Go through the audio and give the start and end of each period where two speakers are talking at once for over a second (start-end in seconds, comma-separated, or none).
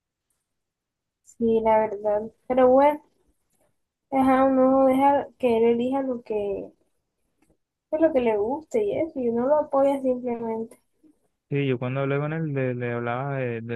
none